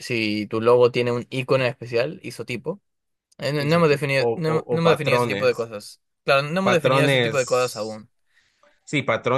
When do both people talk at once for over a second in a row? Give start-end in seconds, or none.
3.6-5.7, 6.6-8.1